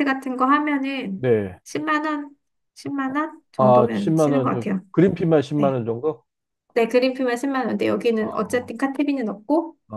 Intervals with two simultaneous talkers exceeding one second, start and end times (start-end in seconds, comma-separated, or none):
3.6-4.8